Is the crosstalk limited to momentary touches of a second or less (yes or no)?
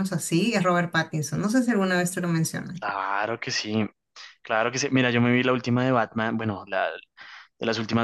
yes